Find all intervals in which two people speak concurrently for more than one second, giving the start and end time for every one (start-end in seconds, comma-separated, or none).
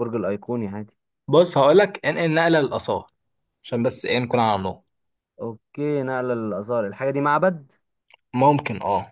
none